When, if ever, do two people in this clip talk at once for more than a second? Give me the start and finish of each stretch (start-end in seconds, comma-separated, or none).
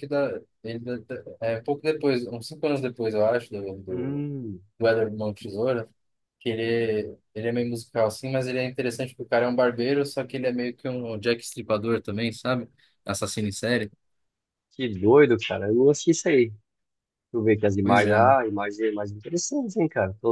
none